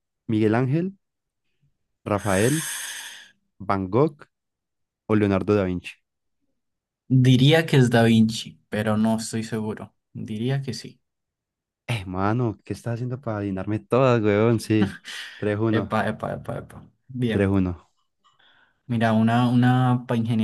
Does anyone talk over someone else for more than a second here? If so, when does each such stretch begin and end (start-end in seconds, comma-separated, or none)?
none